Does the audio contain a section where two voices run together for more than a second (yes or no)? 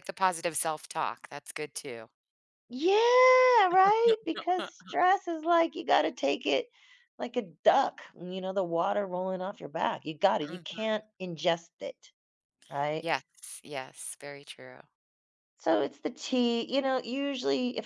no